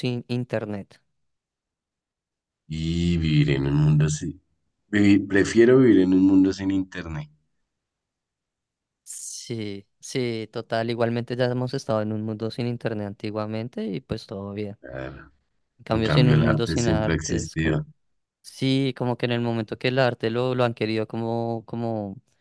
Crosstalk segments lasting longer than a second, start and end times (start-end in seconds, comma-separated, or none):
15.9-17.8